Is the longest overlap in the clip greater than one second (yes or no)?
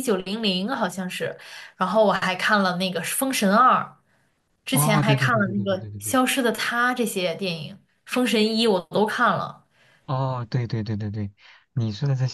yes